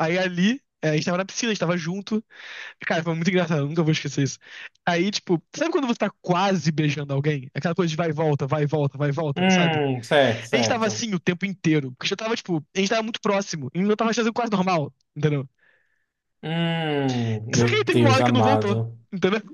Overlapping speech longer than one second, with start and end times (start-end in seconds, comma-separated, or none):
17.6-19.0